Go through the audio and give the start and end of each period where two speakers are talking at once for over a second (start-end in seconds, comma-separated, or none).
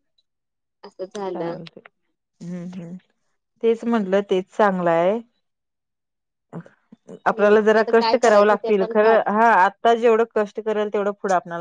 7.3-9.2